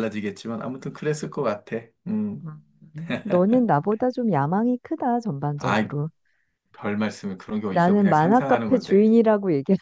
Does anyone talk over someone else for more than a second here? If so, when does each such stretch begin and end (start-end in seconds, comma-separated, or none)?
7.7-9.1